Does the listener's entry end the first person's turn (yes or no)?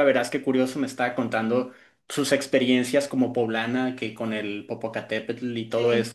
no